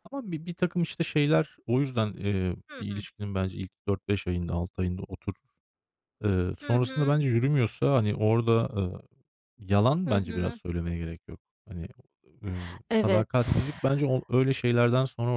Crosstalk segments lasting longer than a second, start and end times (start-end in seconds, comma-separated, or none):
none